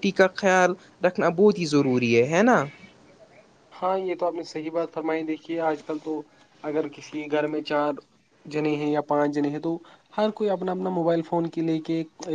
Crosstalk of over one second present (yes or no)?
no